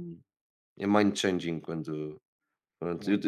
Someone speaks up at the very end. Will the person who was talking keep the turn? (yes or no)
yes